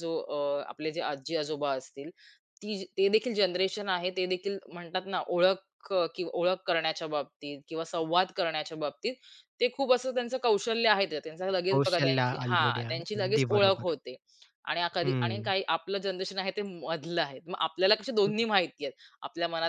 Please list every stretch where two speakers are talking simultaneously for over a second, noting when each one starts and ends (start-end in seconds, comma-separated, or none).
11.7-13.9